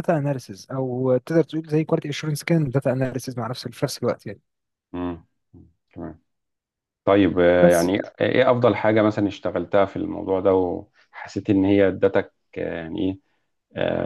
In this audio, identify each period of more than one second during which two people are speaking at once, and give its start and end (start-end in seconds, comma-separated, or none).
none